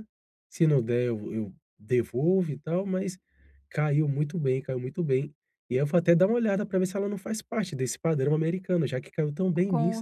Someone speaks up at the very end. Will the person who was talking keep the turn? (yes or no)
no